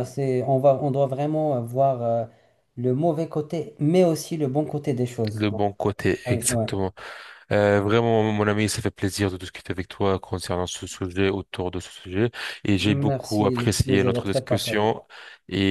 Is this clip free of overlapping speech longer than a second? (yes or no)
no